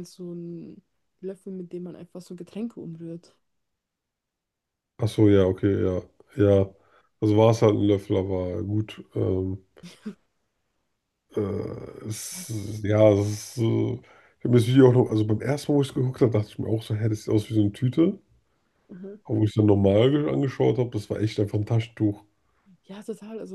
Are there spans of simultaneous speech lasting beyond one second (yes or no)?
no